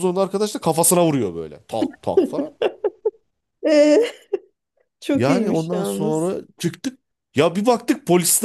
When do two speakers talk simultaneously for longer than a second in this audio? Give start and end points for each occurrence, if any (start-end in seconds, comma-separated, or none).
5.1-6.3